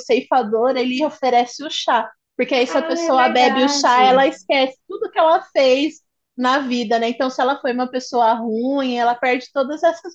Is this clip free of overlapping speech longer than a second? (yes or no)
no